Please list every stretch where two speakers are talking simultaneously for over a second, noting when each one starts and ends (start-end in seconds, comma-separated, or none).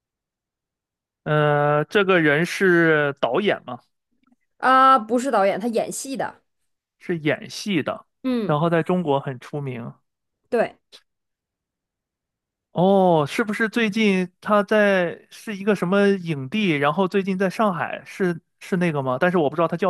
none